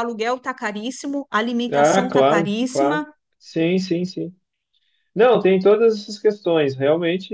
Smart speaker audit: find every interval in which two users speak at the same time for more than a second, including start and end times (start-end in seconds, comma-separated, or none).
1.7-3.1